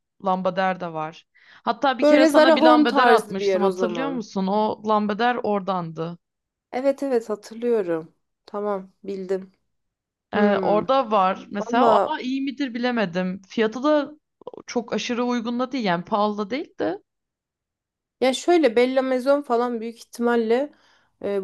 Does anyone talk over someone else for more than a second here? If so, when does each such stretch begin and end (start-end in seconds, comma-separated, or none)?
2.0-4.2